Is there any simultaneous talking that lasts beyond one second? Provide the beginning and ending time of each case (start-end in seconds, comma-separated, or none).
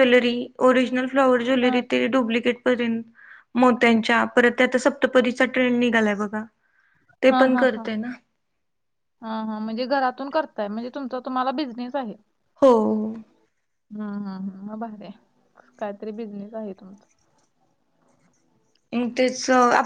none